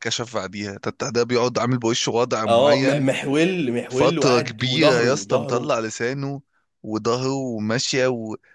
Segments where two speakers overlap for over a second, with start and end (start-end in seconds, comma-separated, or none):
3.9-5.8